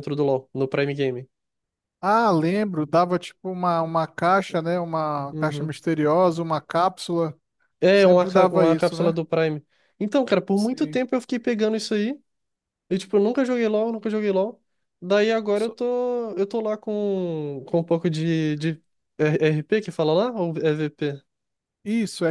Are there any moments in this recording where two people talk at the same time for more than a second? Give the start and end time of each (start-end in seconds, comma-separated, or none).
7.9-9.2